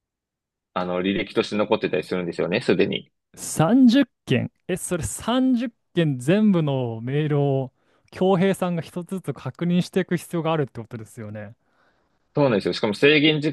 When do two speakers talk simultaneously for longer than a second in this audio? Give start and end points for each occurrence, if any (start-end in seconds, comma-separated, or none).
none